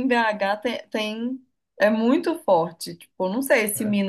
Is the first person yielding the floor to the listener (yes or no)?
no